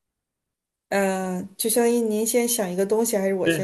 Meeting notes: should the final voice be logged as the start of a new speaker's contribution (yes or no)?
yes